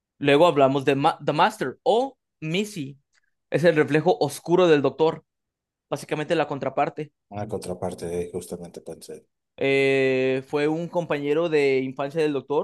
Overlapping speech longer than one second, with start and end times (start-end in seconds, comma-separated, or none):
none